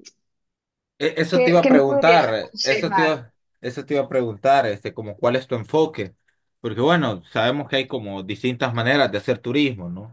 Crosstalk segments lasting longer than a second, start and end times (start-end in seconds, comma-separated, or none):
1.3-3.2